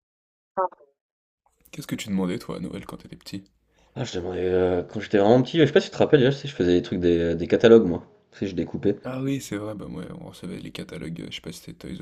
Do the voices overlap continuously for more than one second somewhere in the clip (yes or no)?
no